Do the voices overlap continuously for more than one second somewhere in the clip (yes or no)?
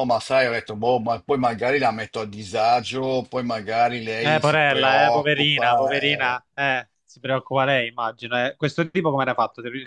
yes